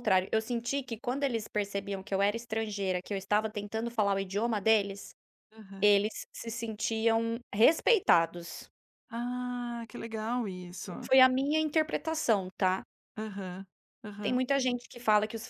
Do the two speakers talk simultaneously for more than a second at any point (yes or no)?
no